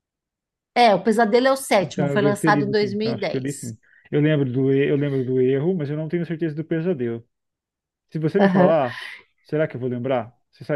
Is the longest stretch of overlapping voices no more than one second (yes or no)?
no